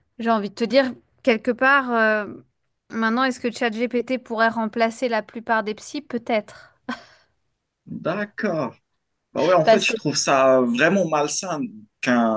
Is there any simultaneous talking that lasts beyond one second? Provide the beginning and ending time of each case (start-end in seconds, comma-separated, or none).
none